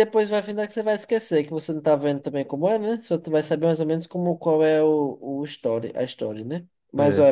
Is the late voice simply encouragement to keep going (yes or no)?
yes